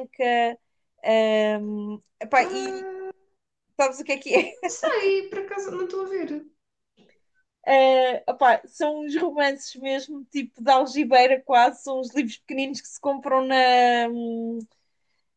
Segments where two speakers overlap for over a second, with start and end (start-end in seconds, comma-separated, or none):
none